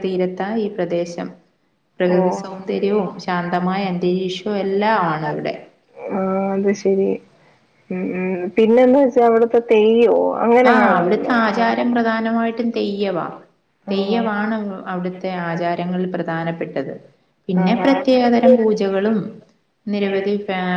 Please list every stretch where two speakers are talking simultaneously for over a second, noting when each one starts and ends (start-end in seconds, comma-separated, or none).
2.2-3.7